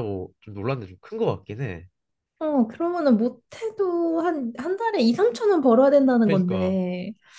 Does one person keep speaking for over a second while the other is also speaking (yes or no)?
no